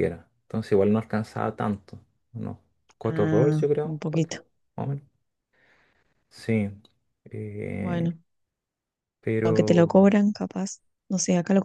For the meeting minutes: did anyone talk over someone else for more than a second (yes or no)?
yes